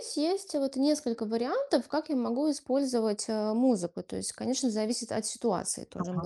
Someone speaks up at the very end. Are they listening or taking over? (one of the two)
taking over